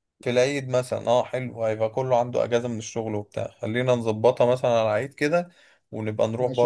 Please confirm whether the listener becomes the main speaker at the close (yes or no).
yes